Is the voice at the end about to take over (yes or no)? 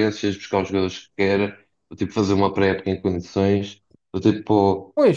no